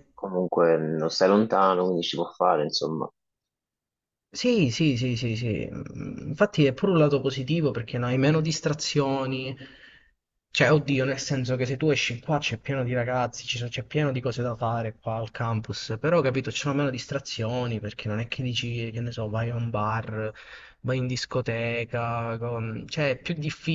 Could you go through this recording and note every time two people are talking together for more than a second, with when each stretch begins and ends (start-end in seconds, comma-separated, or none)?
none